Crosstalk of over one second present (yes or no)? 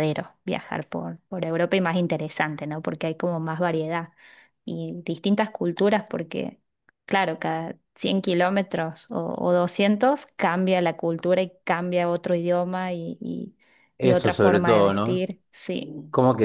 yes